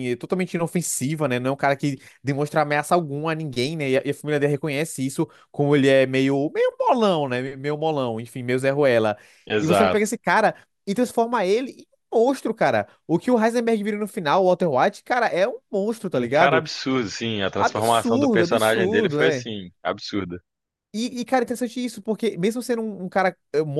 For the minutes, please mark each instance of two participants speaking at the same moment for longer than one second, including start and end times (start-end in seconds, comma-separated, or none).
17.5-19.5